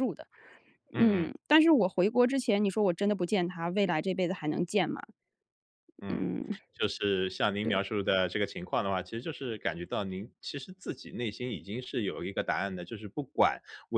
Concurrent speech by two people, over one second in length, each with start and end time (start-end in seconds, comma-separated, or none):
none